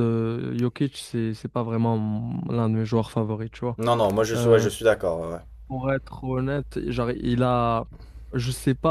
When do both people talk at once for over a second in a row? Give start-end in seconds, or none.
none